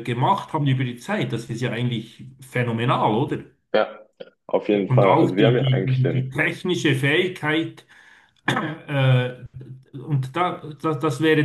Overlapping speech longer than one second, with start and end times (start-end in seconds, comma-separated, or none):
4.9-6.4